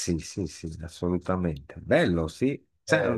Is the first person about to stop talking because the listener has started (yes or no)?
no